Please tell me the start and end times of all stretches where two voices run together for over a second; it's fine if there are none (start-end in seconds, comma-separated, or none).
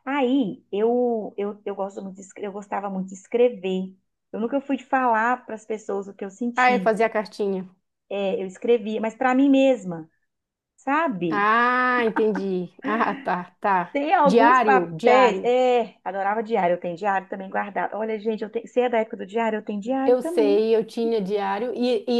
13.9-15.5